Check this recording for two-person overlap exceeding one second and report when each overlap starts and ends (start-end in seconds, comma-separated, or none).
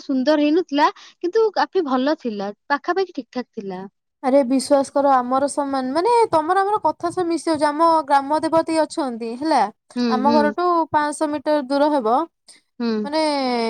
none